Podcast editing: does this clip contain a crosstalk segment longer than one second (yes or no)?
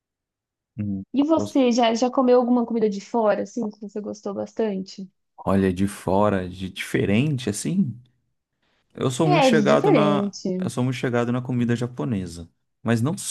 yes